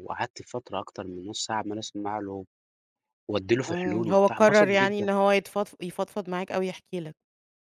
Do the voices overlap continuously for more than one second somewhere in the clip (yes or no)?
yes